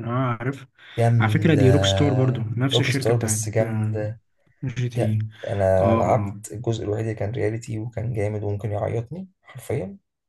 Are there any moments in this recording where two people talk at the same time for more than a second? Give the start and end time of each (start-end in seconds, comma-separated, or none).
2.7-4.0